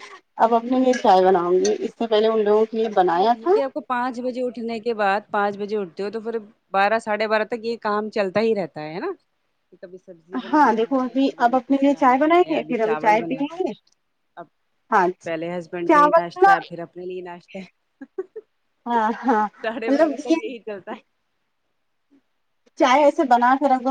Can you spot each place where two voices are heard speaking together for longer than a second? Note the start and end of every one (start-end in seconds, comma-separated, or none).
10.5-13.7